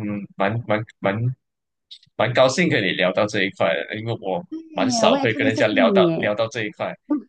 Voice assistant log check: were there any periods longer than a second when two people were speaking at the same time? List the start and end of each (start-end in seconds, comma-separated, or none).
4.5-6.3